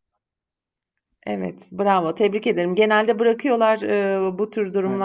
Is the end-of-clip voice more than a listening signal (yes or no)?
no